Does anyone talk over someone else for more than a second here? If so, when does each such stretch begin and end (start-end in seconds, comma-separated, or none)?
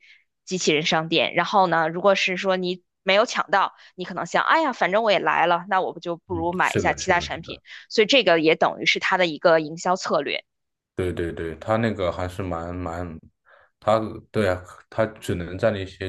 6.3-7.6